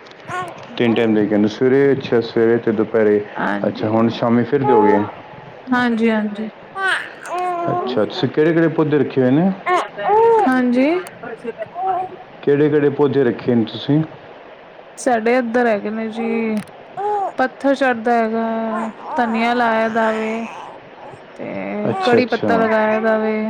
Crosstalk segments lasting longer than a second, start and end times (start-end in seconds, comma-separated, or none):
none